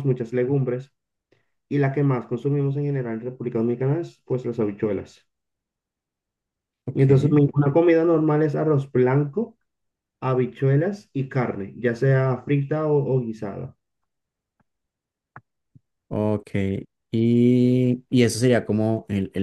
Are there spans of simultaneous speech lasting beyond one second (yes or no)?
no